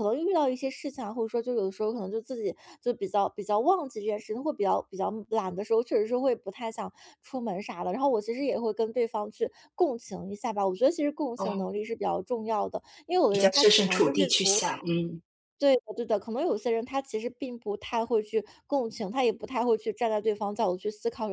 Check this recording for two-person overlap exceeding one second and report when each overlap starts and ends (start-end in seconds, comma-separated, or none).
13.3-14.8